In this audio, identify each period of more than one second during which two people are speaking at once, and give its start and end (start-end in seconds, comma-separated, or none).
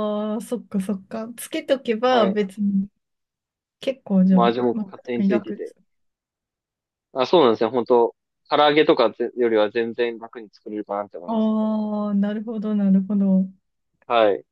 4.3-5.8